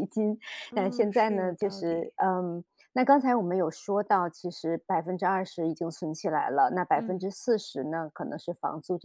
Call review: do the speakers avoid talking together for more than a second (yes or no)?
no